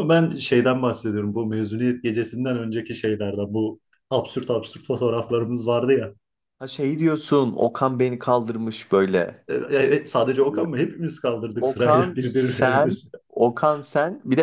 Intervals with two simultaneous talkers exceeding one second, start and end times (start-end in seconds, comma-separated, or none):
11.6-13.1